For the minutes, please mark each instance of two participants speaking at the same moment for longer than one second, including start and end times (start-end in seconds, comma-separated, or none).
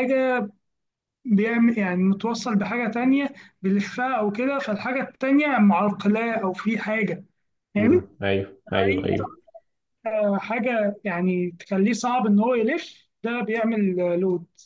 none